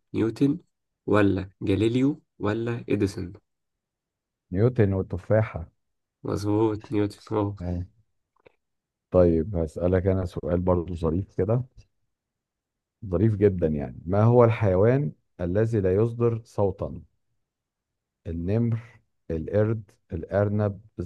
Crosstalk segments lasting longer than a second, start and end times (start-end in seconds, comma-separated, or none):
none